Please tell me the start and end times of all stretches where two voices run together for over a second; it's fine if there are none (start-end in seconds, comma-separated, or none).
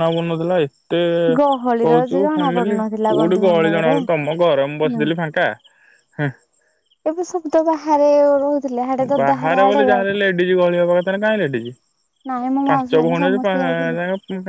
1.9-3.9